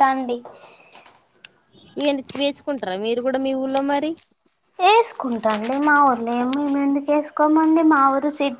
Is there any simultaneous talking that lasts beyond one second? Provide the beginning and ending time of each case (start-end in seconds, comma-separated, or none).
none